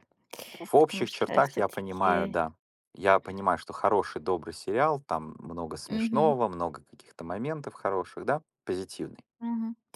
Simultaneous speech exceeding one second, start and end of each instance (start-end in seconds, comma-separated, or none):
0.8-2.4